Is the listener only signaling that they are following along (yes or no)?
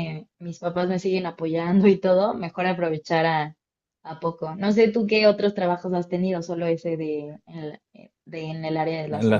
no